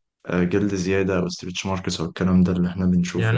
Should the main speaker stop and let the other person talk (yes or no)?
yes